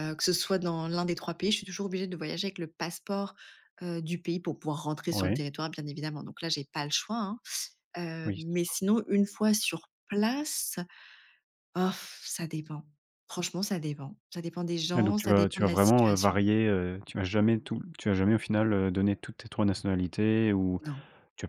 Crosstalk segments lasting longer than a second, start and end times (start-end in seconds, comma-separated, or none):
15.0-16.4